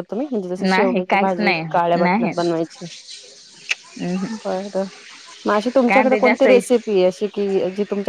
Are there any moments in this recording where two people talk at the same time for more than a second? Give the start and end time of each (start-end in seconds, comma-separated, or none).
0.7-2.3